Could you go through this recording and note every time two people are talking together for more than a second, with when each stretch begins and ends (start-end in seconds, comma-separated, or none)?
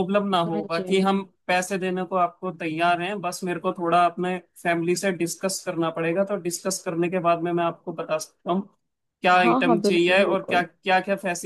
9.4-10.7